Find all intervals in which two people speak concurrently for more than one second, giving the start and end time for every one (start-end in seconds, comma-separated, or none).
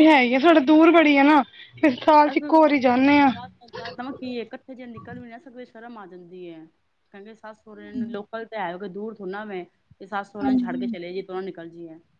none